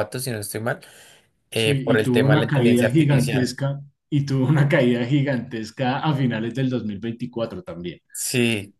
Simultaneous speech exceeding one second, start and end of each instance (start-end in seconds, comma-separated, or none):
1.5-3.5